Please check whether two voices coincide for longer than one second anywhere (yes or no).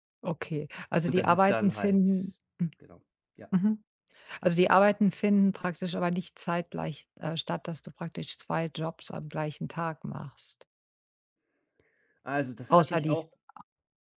yes